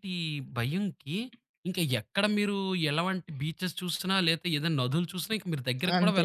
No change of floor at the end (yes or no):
no